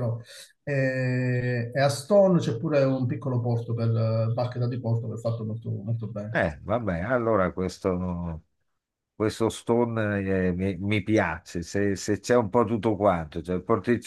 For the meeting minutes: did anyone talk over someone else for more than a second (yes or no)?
no